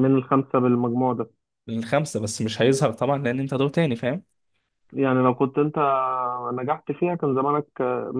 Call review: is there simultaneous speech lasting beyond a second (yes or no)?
no